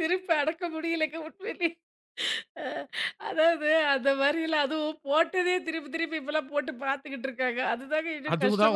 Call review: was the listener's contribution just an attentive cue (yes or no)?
no